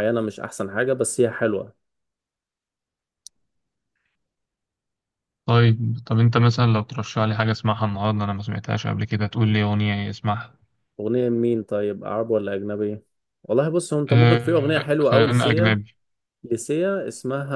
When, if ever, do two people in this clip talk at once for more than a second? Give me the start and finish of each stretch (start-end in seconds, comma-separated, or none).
14.1-15.8